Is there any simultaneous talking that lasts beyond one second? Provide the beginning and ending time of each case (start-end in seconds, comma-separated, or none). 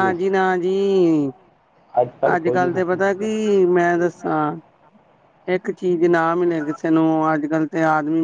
2.4-4.1